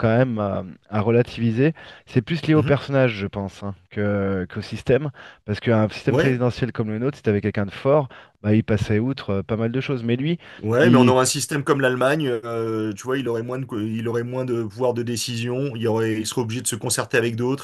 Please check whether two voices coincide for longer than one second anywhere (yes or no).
no